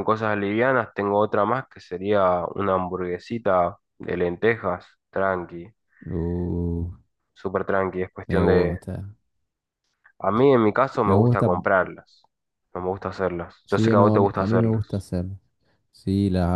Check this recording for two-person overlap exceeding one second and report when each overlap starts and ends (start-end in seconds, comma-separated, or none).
13.7-15.0